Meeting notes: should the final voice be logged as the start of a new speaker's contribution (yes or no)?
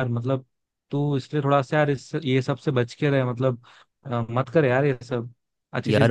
yes